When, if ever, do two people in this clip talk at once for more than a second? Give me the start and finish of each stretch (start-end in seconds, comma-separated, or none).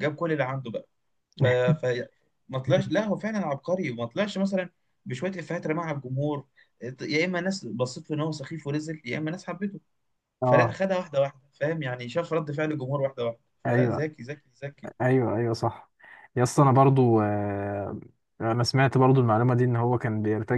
none